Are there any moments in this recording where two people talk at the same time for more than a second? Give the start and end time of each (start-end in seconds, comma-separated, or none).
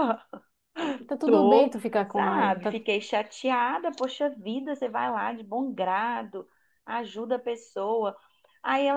1.2-2.8